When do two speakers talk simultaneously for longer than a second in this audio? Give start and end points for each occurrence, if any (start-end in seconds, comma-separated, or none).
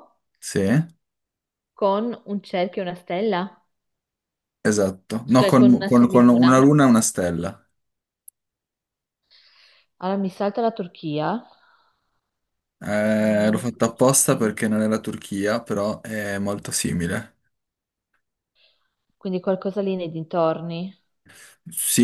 5.3-6.8, 13.1-14.5